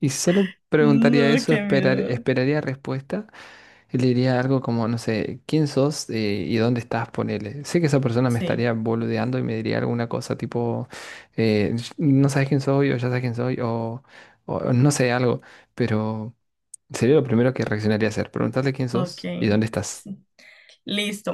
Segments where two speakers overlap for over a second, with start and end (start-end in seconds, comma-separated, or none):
0.8-2.2